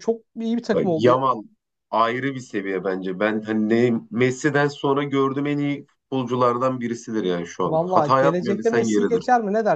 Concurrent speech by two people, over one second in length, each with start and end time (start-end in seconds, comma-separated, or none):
7.6-9.2